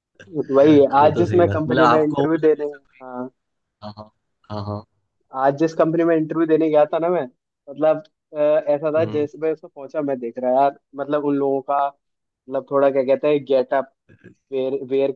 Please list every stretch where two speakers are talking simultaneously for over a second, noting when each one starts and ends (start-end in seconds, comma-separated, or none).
1.0-2.8